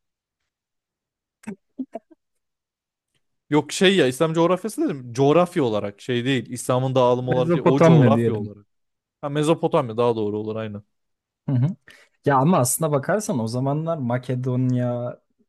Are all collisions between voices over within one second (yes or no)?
no